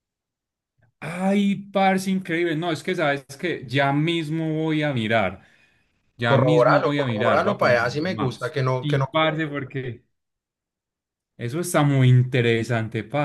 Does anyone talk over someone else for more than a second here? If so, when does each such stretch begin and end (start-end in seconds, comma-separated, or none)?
6.2-9.1